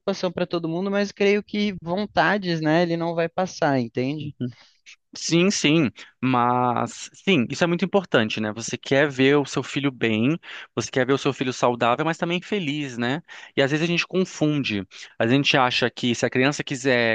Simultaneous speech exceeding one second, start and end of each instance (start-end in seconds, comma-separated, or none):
none